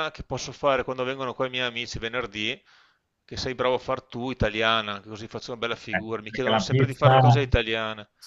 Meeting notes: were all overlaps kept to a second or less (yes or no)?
no